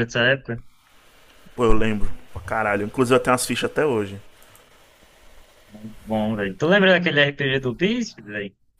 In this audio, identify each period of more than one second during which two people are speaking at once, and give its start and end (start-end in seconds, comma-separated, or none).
none